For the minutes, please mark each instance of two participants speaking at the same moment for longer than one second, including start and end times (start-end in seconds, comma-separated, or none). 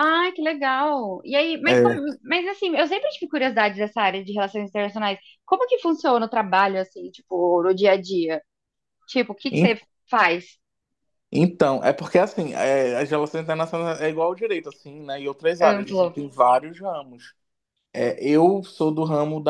none